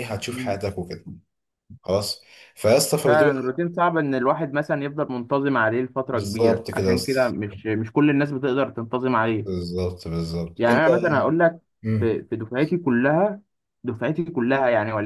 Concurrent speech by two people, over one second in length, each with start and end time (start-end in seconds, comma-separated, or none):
6.1-7.3